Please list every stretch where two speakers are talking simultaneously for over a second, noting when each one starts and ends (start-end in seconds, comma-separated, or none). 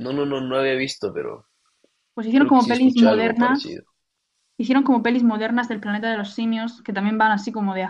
2.3-3.8